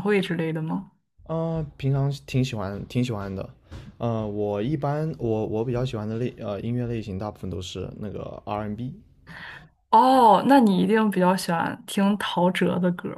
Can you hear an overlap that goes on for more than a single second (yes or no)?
no